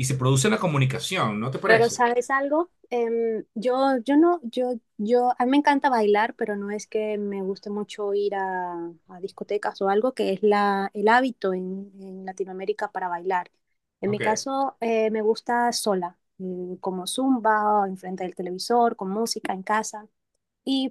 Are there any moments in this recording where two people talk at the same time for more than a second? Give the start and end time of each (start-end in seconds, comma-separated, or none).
none